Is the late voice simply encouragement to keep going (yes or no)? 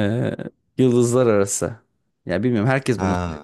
yes